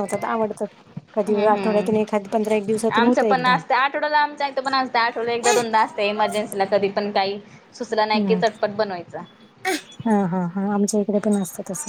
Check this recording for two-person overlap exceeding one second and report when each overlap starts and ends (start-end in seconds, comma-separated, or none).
1.3-3.5